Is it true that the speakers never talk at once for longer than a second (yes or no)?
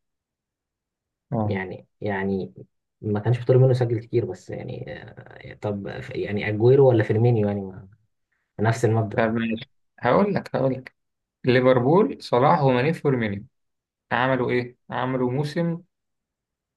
yes